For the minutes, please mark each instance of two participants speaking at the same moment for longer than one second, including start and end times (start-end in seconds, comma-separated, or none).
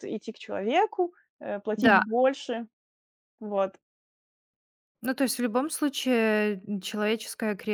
none